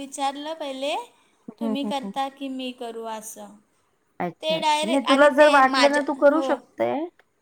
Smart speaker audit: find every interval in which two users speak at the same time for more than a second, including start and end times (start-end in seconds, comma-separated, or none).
4.4-6.5